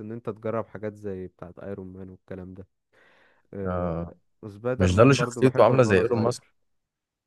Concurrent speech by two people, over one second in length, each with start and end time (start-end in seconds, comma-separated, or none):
4.8-6.4